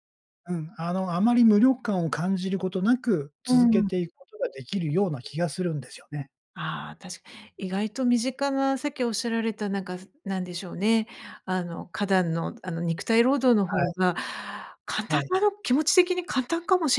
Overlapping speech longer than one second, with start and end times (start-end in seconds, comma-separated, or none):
none